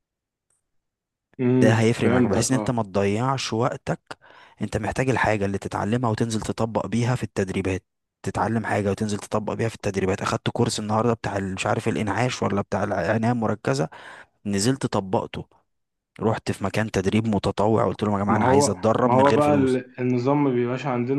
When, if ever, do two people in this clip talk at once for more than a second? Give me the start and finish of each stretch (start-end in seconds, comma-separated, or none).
1.6-2.8, 18.3-19.8